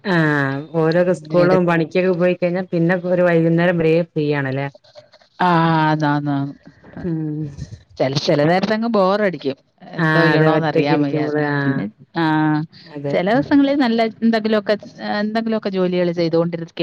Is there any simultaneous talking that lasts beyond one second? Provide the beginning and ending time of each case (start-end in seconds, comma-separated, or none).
10.0-11.8